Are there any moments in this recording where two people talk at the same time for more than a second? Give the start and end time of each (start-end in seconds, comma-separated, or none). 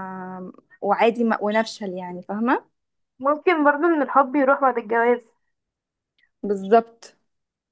none